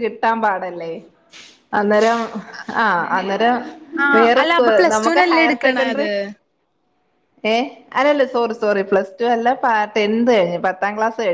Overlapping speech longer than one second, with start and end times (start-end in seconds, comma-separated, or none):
4.2-6.1